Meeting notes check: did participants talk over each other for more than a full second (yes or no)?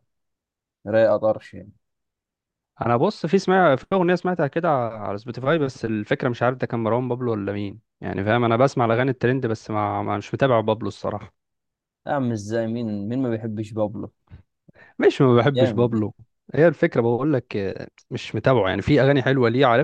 no